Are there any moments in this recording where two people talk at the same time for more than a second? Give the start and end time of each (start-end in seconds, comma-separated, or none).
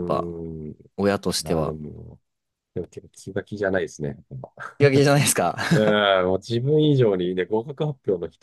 none